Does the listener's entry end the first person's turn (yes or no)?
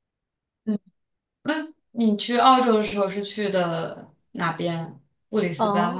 yes